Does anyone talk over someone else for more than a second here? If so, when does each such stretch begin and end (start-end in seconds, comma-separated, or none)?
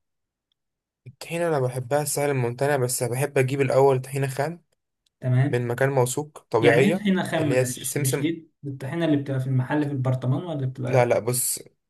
6.6-8.3